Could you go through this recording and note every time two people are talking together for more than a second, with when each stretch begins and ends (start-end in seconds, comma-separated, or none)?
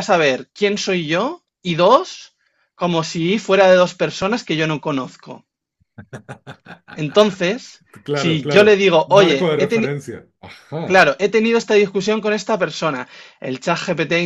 8.0-9.9